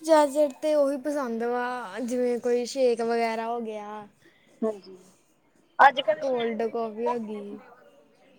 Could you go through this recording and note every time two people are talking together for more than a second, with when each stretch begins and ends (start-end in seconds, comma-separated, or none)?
6.2-7.6